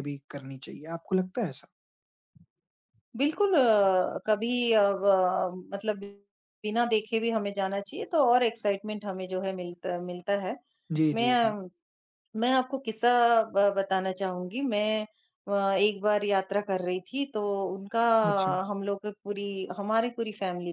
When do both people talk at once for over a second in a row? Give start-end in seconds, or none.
none